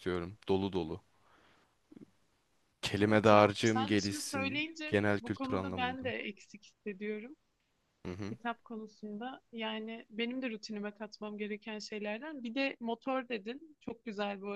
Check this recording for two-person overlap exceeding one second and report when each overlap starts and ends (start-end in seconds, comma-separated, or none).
3.0-6.1